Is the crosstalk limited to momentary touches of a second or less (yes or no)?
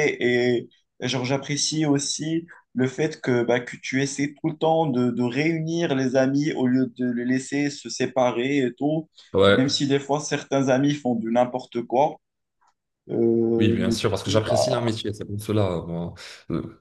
no